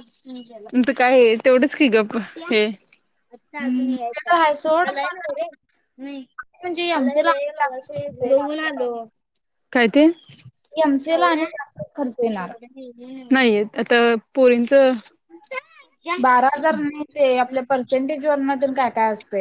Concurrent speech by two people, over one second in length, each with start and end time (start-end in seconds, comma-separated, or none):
3.6-5.3